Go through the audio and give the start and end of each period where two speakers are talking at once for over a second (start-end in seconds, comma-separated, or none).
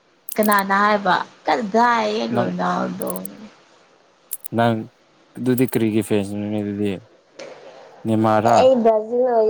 none